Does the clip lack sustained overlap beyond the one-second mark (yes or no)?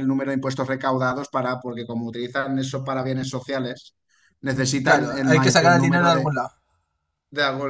no